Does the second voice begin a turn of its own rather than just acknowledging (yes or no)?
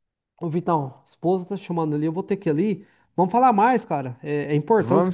no